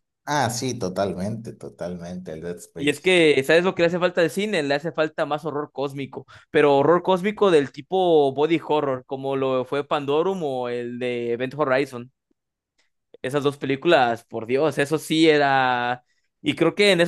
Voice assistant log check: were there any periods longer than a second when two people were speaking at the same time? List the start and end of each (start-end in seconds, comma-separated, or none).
none